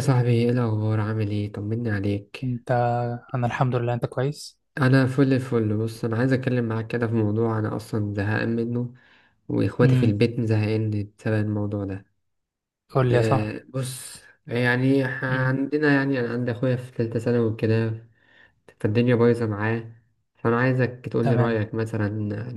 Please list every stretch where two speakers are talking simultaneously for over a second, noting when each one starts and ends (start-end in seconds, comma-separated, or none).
none